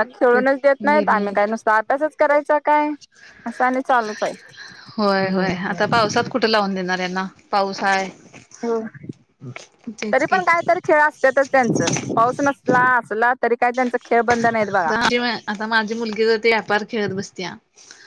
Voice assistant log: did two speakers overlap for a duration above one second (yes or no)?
no